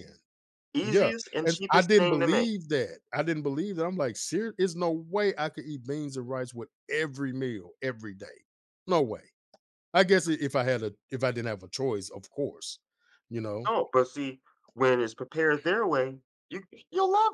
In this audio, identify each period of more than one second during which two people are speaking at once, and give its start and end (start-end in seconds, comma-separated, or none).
0.8-2.5